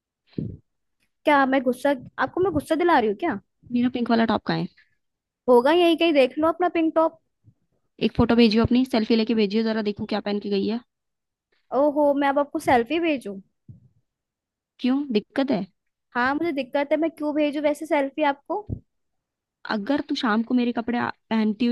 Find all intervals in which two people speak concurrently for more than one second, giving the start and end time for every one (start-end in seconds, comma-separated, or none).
none